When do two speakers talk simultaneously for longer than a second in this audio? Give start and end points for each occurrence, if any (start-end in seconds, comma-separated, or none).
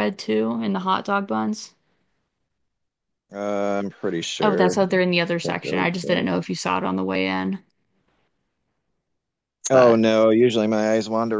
4.4-6.3